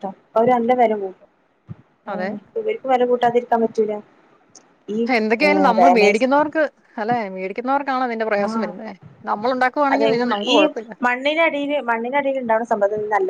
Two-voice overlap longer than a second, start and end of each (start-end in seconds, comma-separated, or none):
none